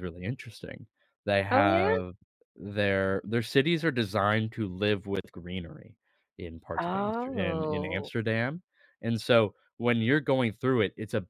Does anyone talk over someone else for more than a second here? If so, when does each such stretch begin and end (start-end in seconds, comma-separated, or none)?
6.8-8.1